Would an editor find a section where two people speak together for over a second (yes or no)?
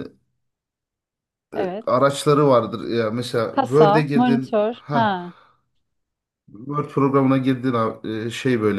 yes